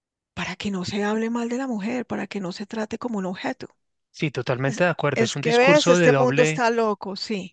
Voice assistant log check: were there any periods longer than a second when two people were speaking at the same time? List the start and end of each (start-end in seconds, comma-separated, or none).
4.7-6.7